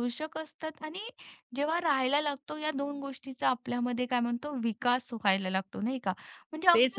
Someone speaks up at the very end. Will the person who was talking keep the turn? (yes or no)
yes